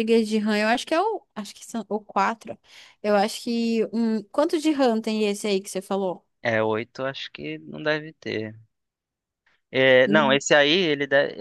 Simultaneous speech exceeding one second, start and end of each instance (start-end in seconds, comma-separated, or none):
none